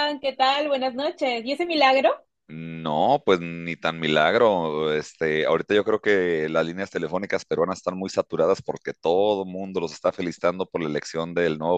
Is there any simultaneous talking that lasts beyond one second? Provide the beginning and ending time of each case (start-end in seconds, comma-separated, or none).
none